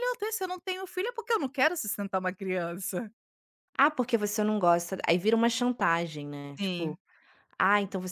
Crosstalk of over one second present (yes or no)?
no